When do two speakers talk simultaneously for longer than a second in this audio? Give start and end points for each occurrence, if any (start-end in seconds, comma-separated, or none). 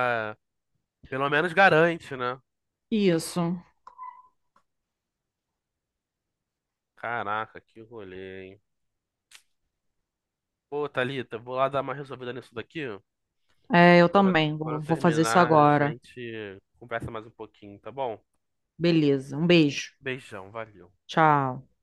14.1-15.9